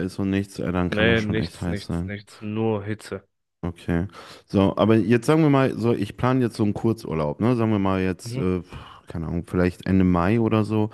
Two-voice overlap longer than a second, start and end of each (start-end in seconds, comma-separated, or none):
0.9-2.1